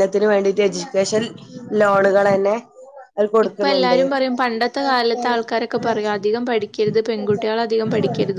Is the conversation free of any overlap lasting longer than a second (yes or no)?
yes